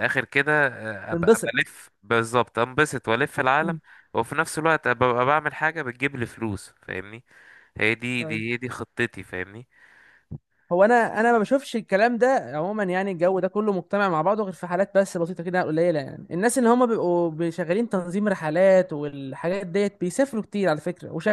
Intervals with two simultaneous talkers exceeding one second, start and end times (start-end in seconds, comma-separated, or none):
none